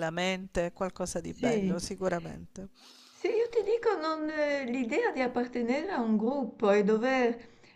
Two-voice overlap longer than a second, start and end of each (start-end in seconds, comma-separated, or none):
none